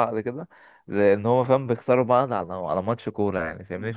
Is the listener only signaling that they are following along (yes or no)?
yes